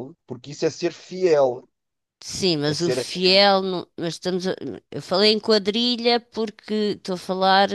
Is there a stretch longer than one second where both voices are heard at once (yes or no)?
no